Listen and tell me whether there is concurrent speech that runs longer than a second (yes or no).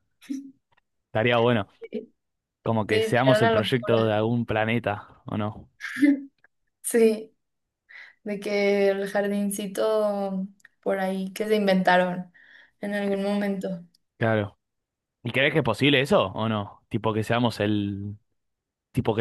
yes